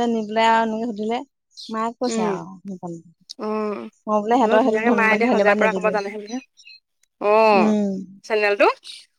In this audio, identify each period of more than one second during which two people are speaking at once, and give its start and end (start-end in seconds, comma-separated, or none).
4.4-6.0